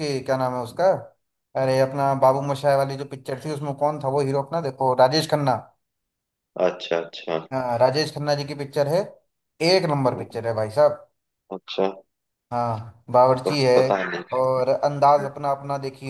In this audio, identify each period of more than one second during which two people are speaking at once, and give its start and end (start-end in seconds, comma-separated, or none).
none